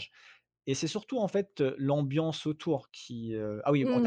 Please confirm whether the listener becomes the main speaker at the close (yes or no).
no